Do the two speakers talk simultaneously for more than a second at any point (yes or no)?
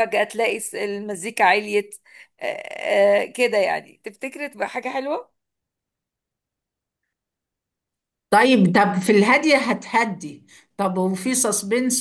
no